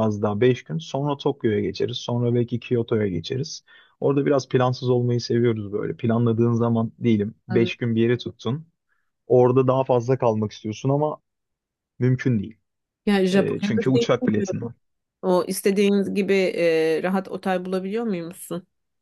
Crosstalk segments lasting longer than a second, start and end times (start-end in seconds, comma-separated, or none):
13.3-14.6